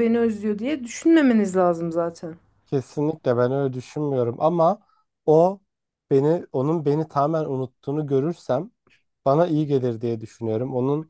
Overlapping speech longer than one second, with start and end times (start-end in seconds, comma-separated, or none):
none